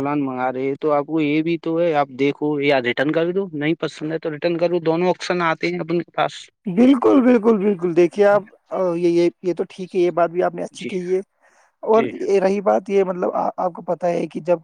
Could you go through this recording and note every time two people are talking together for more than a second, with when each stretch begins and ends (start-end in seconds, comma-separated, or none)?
none